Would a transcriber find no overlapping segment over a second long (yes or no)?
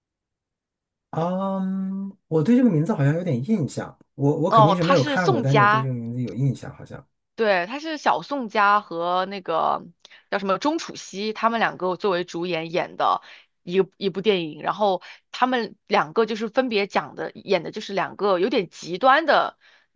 no